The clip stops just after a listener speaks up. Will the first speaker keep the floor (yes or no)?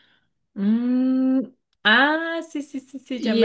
no